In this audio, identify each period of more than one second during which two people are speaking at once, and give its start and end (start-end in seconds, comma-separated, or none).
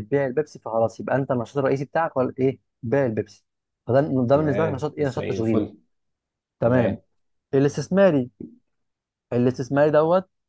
4.3-5.7